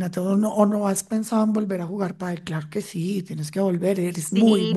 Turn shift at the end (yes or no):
yes